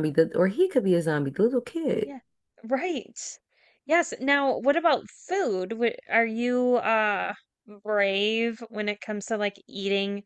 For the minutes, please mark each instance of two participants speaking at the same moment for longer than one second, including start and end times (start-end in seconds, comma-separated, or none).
none